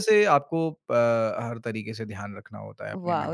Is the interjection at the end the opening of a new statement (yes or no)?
yes